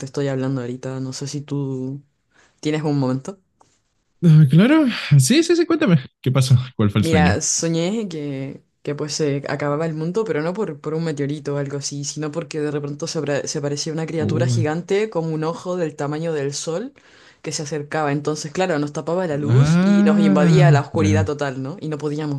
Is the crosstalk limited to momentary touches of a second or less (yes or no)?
no